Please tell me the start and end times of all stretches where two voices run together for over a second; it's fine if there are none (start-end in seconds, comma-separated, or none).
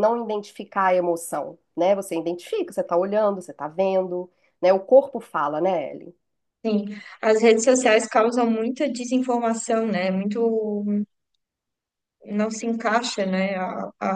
none